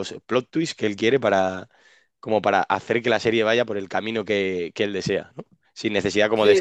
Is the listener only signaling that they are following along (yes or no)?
yes